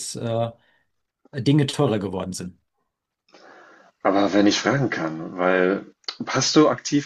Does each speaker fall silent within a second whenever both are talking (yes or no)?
yes